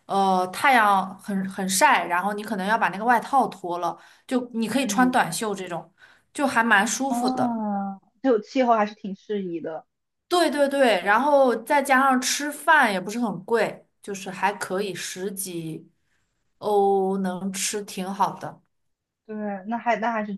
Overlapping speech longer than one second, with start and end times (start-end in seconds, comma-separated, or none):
none